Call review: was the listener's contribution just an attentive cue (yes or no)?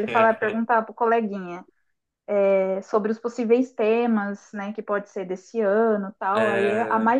yes